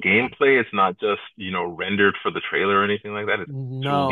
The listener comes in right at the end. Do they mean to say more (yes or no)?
yes